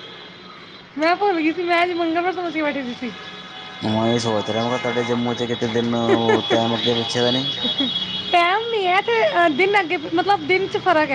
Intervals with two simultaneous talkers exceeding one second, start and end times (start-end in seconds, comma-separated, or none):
none